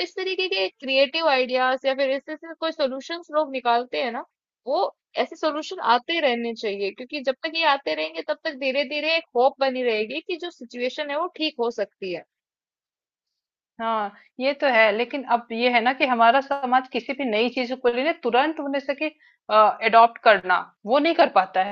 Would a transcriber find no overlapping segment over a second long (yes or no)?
yes